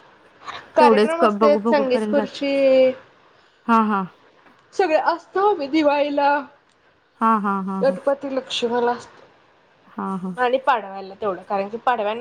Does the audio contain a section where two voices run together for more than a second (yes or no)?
yes